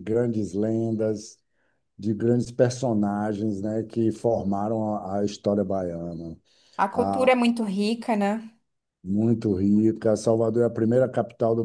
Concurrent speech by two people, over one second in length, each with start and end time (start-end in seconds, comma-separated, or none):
none